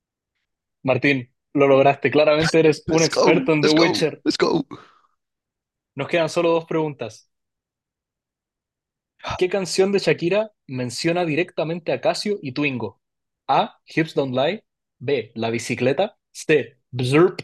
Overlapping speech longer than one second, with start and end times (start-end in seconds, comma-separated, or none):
2.9-4.2